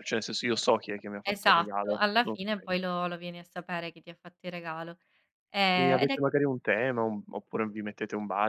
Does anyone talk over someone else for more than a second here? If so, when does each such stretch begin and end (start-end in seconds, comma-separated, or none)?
1.2-2.7